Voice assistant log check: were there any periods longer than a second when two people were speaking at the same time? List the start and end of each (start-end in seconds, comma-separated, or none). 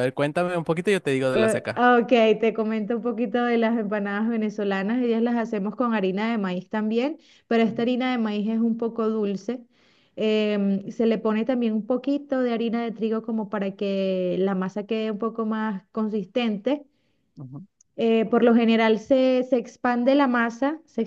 none